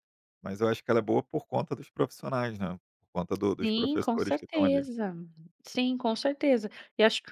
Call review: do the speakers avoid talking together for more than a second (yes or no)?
no